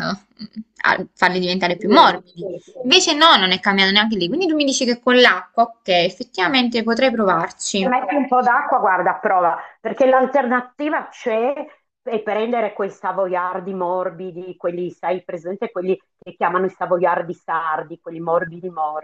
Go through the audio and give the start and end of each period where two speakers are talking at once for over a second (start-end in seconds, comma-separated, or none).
none